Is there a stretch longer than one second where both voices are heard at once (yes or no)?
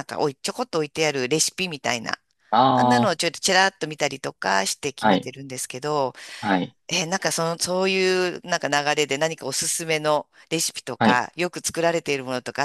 no